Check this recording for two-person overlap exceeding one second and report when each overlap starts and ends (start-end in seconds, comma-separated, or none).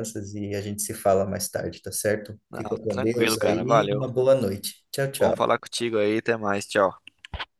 2.5-4.0